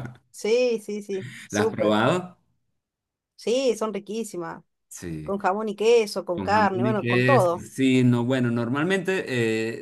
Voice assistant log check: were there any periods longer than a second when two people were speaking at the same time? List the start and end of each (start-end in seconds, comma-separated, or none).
6.3-7.7